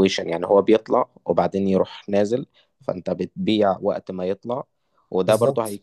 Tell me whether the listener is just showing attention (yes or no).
yes